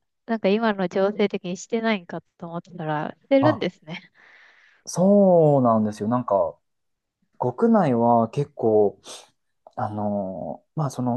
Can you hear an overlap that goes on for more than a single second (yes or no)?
no